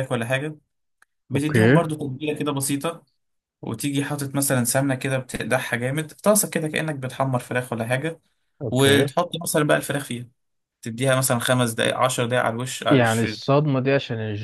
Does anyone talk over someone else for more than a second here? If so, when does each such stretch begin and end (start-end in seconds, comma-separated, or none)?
none